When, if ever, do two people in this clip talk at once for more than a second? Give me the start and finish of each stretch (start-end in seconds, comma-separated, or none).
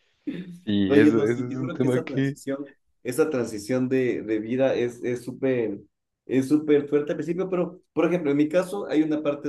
0.9-2.4